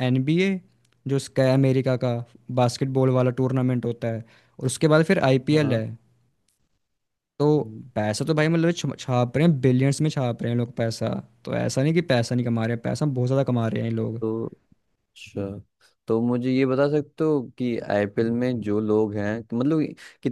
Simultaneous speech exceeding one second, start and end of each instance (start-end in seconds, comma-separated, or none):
none